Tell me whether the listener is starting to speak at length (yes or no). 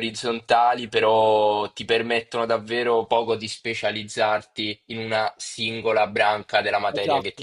yes